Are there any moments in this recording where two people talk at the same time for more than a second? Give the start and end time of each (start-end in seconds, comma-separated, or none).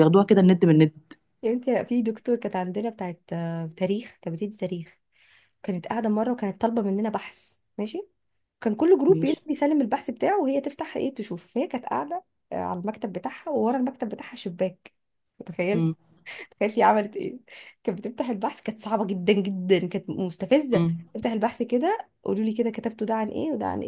none